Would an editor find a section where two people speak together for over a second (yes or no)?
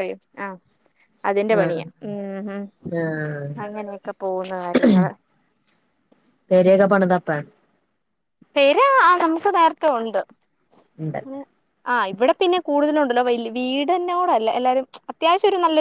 no